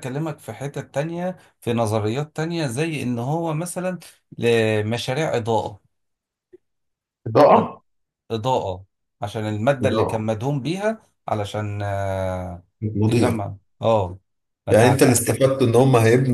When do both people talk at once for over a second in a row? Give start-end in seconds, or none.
none